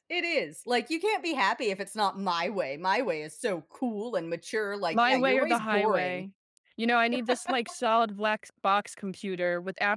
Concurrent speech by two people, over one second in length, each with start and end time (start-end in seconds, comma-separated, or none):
4.9-6.3